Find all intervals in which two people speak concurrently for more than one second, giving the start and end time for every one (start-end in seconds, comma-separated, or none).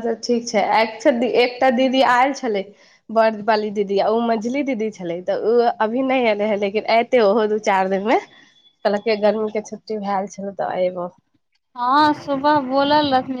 none